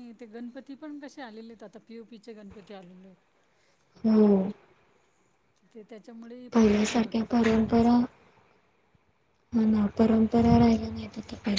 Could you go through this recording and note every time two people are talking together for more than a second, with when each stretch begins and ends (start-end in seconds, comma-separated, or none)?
6.5-7.9